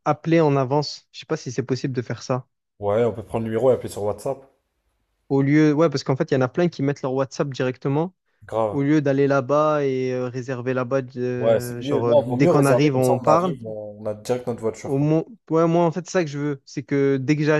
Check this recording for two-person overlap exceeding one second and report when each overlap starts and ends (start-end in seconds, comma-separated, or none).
11.4-13.6